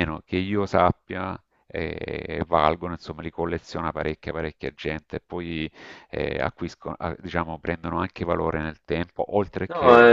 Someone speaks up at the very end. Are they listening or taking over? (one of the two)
taking over